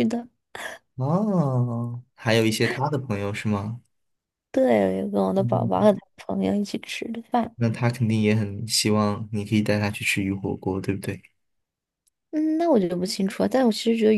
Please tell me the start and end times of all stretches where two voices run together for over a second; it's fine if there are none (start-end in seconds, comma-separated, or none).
none